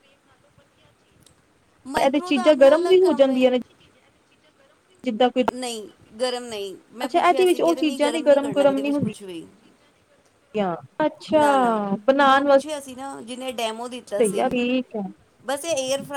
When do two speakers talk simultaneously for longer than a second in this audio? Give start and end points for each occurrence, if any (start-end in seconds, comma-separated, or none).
2.0-3.4, 7.0-9.2